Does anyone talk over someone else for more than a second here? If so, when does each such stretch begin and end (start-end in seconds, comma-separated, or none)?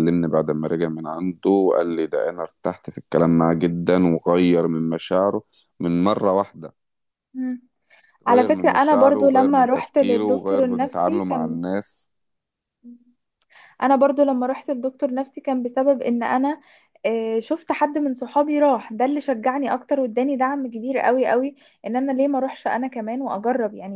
8.3-11.6